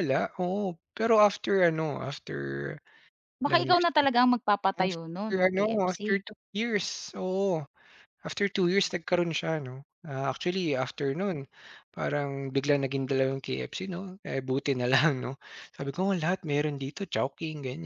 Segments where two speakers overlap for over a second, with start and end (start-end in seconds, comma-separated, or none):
4.8-6.2